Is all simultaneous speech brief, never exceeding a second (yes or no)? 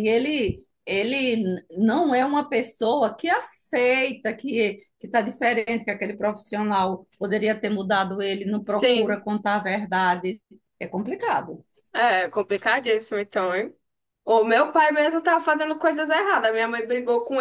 yes